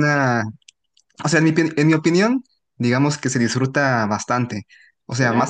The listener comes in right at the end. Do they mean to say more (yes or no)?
no